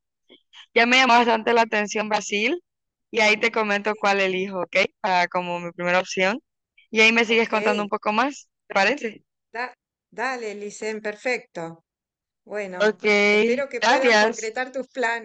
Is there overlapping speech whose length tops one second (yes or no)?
yes